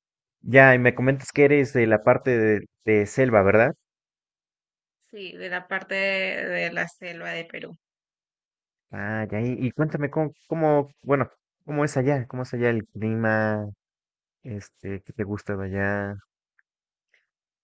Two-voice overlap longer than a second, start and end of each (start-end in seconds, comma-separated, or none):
none